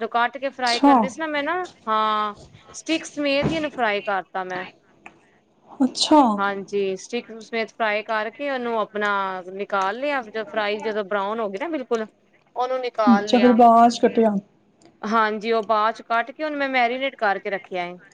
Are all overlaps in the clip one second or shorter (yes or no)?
yes